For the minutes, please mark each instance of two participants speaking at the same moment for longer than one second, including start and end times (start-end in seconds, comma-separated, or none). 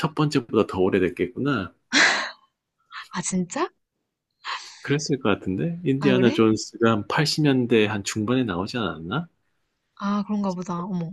none